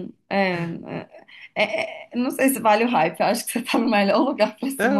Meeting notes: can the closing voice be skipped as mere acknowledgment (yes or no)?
no